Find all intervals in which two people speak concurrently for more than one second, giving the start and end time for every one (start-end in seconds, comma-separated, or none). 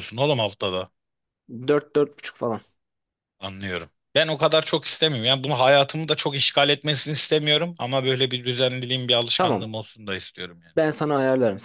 none